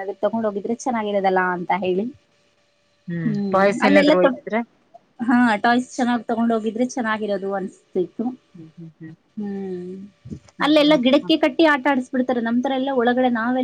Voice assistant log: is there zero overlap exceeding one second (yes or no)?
yes